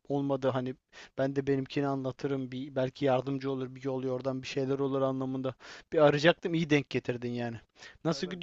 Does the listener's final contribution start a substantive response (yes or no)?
no